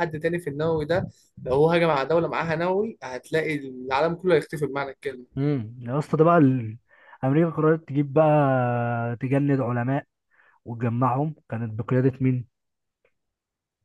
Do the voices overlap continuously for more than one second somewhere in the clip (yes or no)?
no